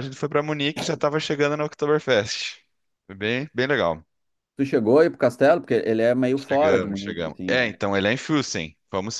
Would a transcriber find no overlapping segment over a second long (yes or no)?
no